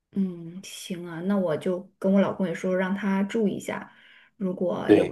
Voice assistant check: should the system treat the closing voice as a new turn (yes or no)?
no